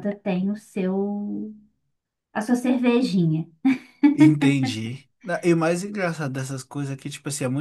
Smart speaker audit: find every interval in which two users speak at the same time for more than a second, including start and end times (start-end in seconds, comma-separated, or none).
none